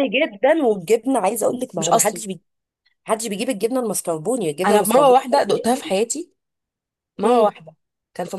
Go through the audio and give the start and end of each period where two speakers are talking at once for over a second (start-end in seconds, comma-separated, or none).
4.7-5.9